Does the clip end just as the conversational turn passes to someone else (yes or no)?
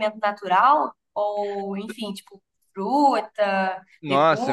yes